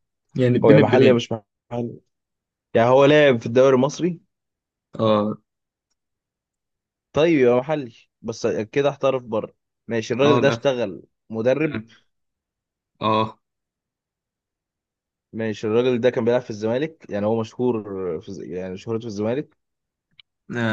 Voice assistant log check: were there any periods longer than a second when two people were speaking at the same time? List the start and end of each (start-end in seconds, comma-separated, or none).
none